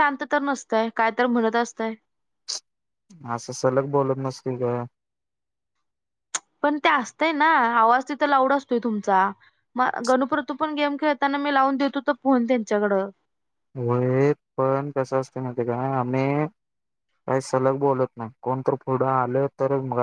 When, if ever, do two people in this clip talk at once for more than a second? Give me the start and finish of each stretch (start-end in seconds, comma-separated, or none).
none